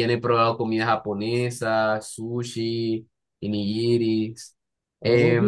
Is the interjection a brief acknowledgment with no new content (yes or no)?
no